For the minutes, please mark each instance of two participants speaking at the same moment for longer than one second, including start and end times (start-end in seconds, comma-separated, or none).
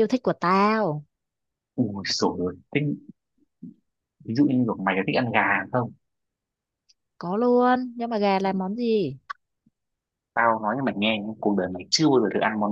none